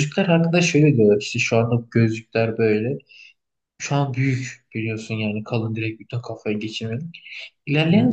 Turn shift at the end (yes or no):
no